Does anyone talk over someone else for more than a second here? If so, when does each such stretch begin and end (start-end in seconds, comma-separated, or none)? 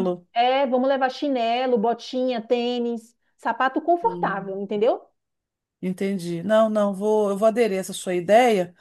none